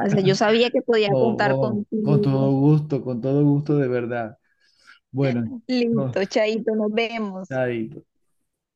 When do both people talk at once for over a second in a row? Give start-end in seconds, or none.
1.1-2.5